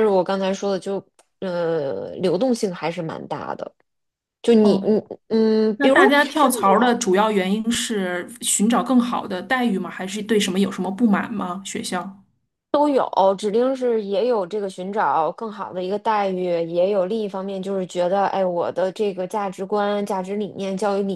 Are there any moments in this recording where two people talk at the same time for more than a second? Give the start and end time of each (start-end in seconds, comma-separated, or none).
none